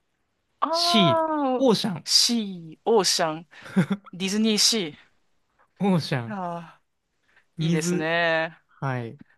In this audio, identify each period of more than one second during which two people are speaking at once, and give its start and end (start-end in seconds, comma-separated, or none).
none